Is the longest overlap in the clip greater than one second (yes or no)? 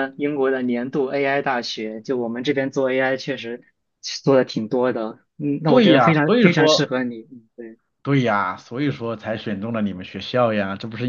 yes